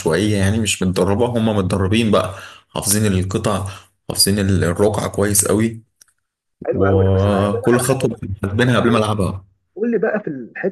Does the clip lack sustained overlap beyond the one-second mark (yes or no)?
no